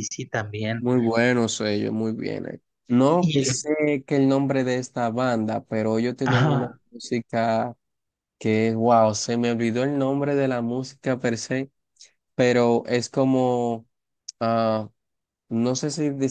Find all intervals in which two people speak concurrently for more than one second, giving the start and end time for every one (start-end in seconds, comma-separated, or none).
none